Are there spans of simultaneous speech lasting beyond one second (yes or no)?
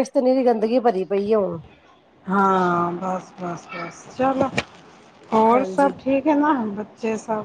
no